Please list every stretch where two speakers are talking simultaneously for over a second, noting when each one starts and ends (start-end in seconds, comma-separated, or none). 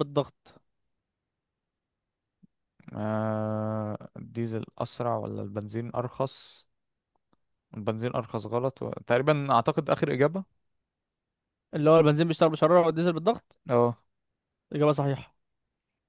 none